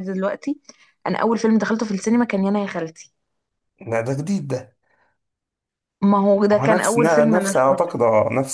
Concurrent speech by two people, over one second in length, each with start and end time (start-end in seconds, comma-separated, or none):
6.5-7.9